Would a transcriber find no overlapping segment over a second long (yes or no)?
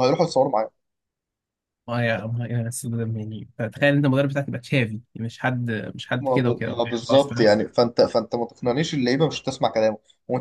no